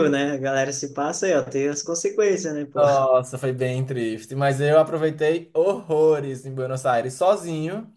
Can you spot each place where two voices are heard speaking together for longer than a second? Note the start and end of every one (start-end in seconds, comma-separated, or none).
none